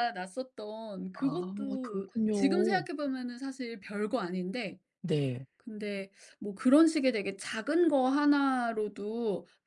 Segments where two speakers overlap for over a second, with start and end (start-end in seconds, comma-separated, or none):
1.2-2.8